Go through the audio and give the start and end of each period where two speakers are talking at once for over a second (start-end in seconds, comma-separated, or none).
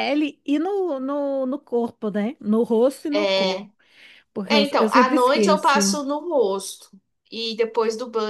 4.5-6.0